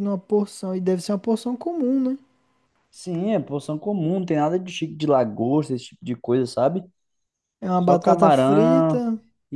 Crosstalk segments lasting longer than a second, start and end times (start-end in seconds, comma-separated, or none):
7.8-9.1